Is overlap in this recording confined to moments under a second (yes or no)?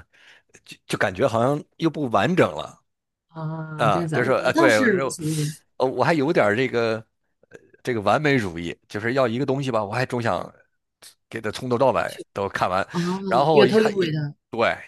no